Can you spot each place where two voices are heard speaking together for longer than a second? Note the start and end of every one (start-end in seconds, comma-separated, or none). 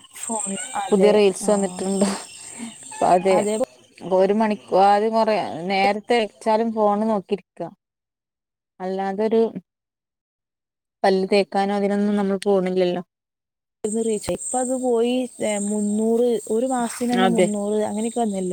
none